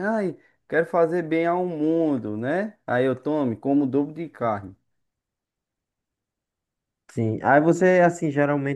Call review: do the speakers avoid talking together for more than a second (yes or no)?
yes